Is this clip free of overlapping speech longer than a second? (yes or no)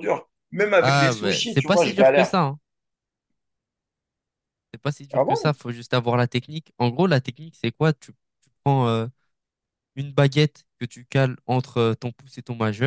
no